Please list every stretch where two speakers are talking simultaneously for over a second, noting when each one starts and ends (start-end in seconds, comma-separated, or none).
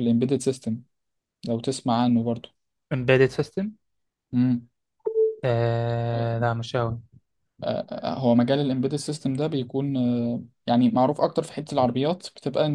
none